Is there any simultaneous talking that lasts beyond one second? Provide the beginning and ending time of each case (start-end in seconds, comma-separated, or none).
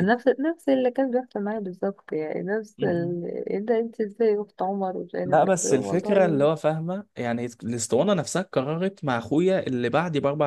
5.2-6.5